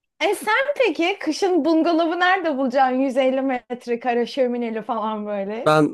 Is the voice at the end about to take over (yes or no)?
yes